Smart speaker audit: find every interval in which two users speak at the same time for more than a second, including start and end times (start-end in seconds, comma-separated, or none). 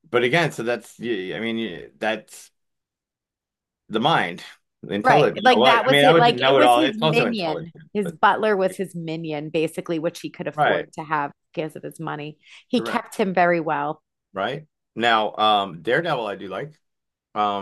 5.0-8.2